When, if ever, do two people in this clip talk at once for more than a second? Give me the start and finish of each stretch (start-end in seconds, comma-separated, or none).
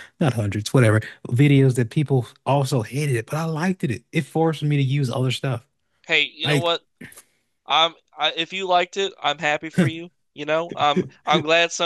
none